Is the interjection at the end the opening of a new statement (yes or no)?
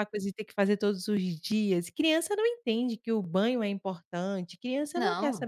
no